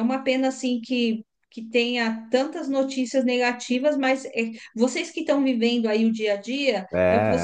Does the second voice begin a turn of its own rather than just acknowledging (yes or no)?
no